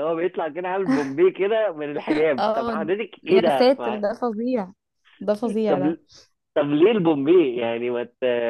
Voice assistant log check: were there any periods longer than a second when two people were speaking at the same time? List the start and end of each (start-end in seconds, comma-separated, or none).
2.4-4.0